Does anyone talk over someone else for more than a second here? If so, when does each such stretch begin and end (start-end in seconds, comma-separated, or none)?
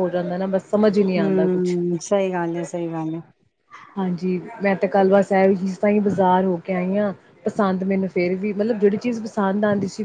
none